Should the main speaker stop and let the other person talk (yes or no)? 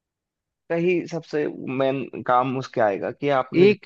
yes